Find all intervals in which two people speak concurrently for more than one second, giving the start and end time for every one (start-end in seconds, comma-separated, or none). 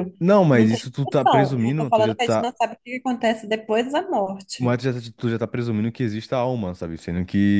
0.5-2.5